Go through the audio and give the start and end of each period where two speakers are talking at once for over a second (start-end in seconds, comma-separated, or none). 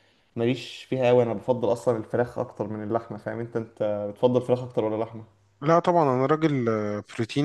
none